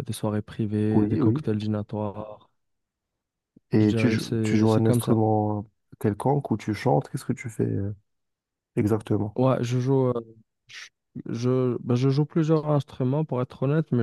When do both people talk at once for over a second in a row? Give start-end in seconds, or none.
3.8-5.1